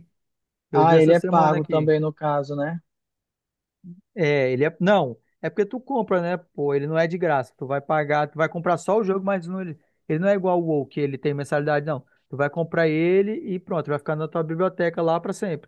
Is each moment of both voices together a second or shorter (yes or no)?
no